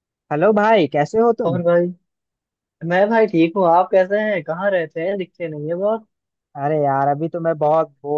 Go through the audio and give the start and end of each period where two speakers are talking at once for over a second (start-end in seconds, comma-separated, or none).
none